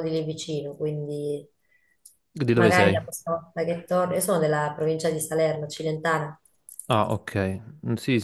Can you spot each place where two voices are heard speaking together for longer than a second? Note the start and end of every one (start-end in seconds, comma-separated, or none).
none